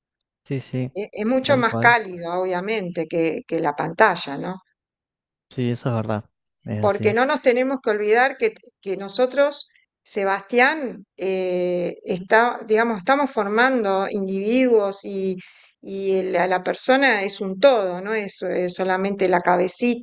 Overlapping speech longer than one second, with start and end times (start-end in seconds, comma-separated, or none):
none